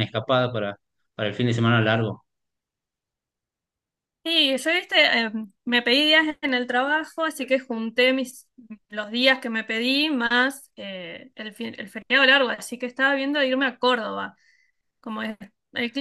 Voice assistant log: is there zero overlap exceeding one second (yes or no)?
yes